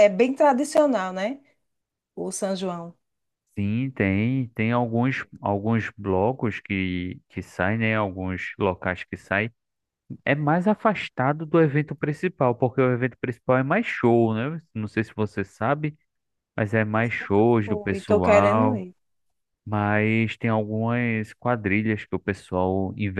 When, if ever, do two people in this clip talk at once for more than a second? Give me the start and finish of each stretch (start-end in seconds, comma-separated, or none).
17.6-18.9